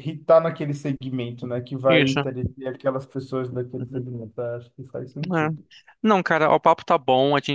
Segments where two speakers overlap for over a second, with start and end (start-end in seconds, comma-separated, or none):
none